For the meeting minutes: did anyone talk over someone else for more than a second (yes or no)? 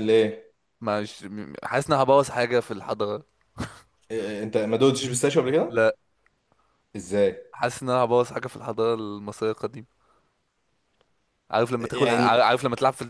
no